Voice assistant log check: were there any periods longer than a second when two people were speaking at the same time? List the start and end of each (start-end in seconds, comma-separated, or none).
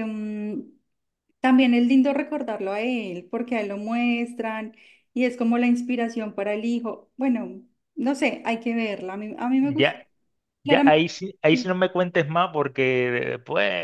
none